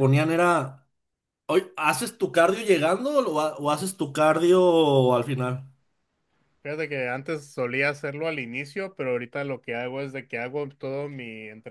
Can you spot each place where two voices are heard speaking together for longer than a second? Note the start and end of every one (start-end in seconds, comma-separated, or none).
none